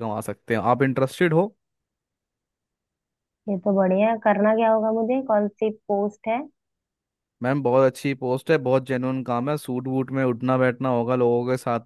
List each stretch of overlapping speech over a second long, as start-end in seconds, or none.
none